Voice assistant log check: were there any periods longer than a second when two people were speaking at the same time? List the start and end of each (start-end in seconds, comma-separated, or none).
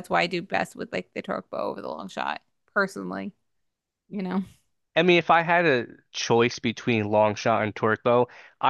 none